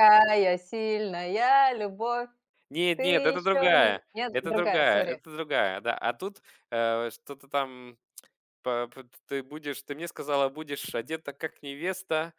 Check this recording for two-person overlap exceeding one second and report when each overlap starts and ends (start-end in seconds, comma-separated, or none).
3.0-5.2